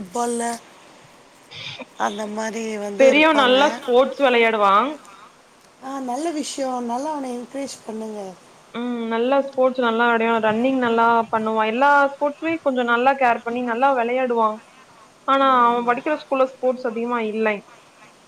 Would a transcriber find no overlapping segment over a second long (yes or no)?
yes